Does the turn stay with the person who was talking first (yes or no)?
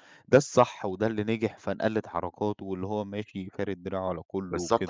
no